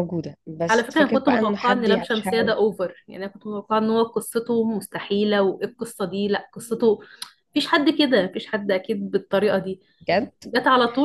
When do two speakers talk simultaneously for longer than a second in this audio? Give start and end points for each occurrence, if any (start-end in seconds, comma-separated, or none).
0.7-2.5